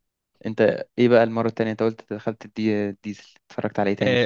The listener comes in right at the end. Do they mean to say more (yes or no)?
yes